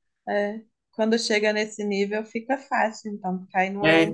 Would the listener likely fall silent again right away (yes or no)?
no